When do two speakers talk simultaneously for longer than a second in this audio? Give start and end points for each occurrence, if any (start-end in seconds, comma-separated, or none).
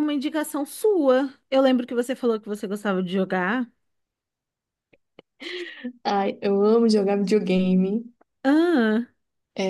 none